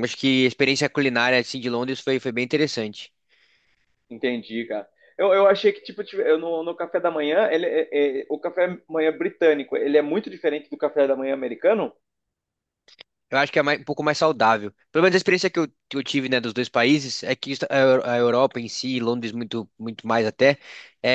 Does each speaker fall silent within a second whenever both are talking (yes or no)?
yes